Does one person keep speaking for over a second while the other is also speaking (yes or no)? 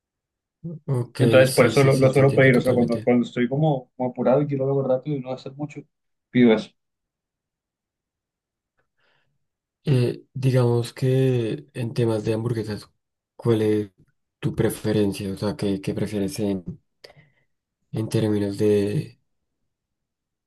yes